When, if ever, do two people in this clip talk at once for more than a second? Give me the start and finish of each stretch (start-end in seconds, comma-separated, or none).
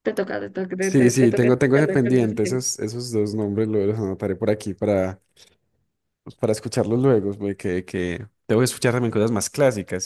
0.8-2.7